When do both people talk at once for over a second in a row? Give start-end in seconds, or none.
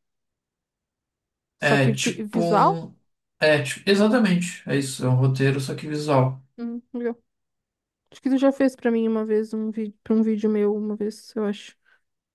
1.6-2.8